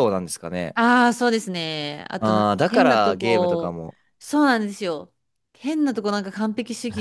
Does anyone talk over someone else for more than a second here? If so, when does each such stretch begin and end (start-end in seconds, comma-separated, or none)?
2.2-3.8